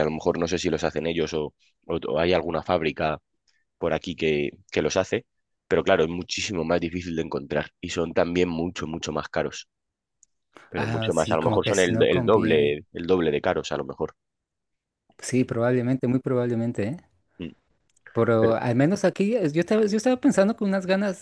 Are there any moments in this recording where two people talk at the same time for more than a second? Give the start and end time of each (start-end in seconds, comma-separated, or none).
10.8-12.8